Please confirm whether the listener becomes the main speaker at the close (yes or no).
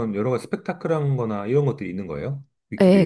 yes